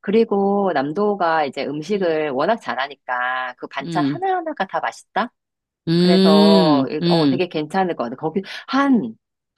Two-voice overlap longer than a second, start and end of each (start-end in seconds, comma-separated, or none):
6.0-7.4